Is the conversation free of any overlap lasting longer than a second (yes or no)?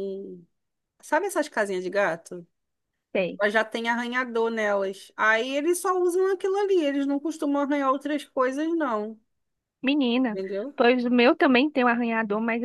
yes